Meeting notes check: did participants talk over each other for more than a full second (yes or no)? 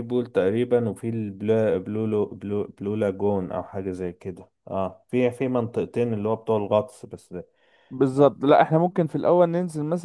no